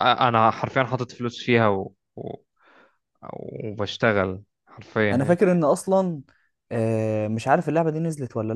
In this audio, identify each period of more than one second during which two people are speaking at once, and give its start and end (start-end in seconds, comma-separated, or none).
none